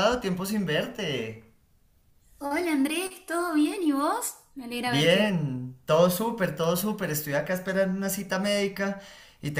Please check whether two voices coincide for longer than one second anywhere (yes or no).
no